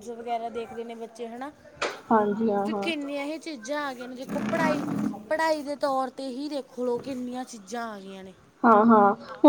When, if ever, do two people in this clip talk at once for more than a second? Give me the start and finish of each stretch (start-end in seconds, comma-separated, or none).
none